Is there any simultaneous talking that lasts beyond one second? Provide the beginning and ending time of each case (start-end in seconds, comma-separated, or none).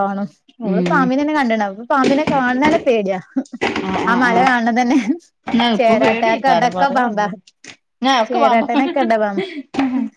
5.8-7.3